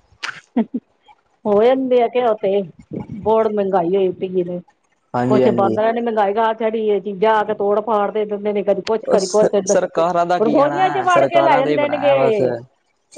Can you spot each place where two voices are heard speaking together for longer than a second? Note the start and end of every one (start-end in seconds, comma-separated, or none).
10.4-12.3